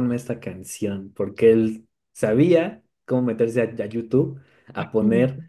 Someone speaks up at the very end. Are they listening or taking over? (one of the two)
listening